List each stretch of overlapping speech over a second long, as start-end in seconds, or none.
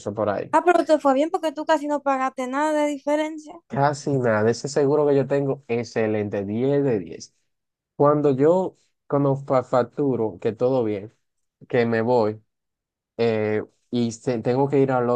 none